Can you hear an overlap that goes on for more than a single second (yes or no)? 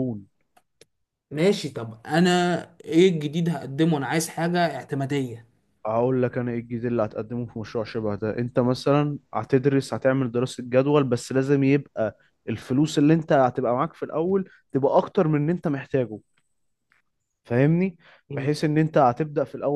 no